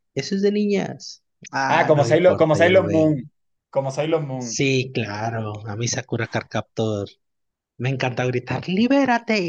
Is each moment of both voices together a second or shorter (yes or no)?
no